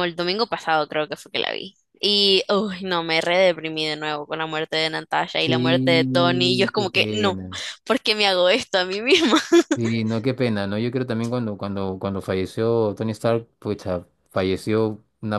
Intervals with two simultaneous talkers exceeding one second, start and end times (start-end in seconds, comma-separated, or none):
5.4-7.4